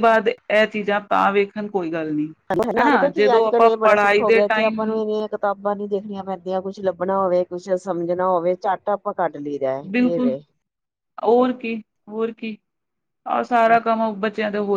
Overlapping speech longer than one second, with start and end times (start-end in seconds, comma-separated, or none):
2.8-5.0